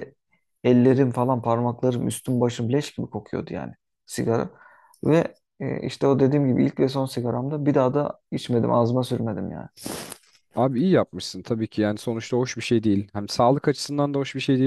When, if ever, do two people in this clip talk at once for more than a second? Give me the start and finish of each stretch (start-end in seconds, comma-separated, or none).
none